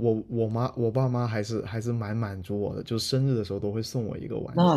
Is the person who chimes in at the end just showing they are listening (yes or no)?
no